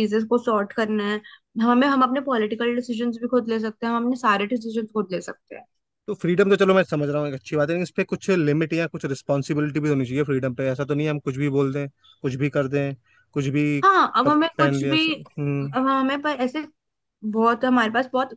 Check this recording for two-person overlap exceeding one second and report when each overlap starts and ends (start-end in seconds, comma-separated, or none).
13.8-15.1